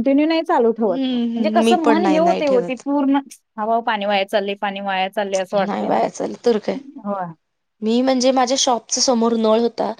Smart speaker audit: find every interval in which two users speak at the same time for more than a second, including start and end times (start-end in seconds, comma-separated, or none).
0.9-2.8